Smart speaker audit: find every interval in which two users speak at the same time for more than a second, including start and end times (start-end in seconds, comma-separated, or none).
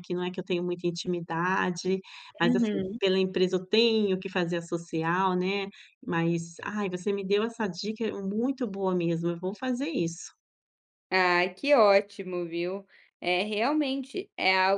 none